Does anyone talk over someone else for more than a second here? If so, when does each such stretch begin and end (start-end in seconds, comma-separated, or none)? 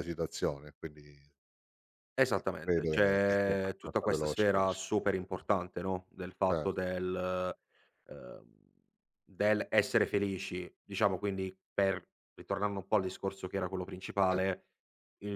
2.4-4.8